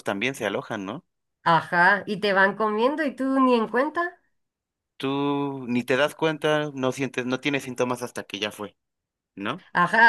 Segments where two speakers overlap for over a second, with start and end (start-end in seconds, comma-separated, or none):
none